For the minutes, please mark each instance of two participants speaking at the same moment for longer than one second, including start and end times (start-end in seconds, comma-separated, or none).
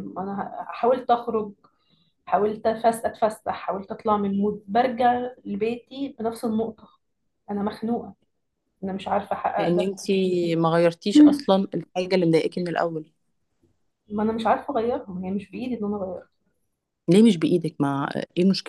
none